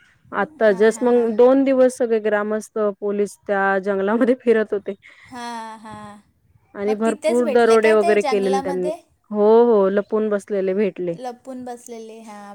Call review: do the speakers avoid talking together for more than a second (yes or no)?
no